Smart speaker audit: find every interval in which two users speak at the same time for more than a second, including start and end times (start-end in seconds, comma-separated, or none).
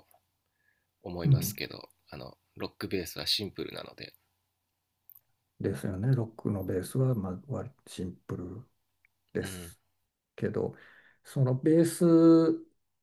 none